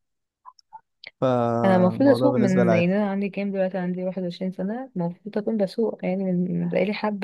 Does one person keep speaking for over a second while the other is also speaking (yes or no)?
yes